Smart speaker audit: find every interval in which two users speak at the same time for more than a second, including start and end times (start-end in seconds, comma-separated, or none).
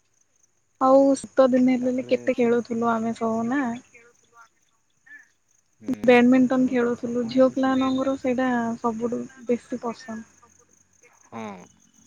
6.1-7.9